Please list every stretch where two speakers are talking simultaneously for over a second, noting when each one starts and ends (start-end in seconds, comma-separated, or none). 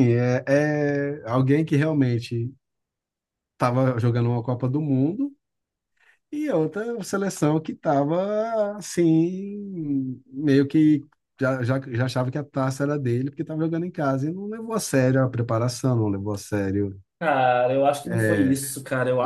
none